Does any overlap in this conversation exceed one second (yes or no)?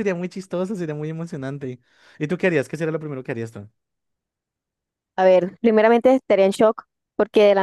no